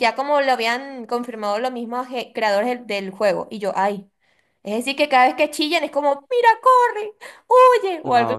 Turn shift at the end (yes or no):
yes